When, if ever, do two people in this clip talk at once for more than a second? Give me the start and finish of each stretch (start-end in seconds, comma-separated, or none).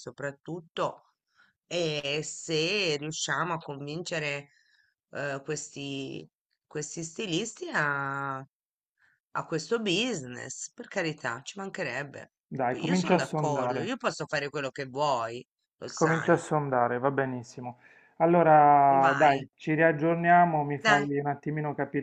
12.7-13.9